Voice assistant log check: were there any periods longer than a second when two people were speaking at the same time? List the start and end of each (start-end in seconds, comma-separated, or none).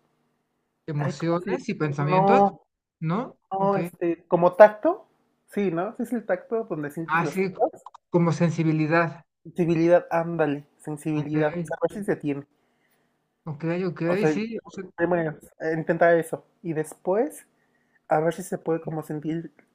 1.0-2.4